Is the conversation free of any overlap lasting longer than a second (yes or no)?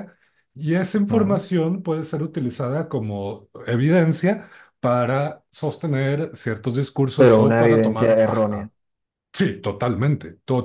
no